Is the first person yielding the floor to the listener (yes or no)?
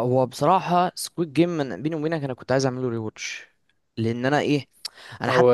no